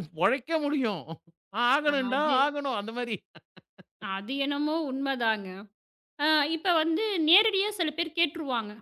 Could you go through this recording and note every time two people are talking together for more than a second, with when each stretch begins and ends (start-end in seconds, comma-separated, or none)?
none